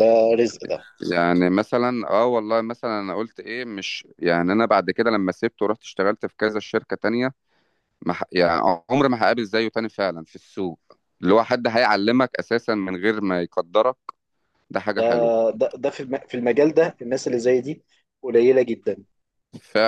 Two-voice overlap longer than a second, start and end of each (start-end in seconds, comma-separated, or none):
none